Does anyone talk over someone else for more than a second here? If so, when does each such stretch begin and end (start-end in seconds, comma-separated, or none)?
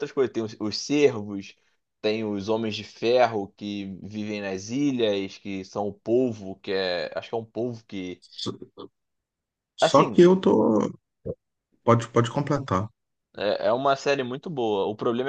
none